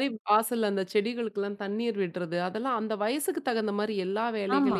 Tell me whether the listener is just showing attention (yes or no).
yes